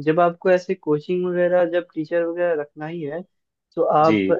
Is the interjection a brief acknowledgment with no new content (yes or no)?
yes